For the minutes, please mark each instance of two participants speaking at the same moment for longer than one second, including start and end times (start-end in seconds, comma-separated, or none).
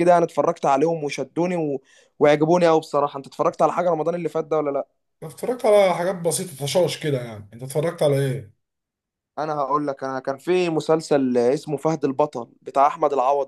none